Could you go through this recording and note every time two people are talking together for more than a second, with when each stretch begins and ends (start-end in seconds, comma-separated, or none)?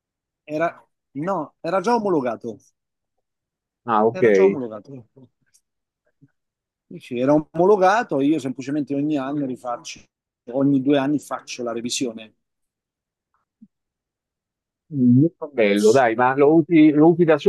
none